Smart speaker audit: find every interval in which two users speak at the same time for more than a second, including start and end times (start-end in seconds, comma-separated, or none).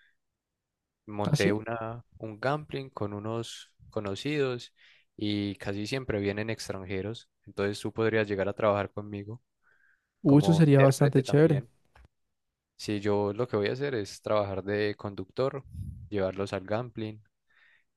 10.2-11.6